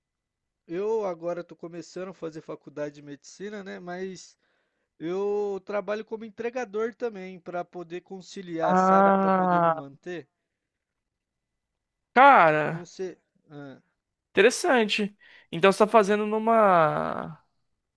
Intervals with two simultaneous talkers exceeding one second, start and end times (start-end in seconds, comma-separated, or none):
8.6-9.8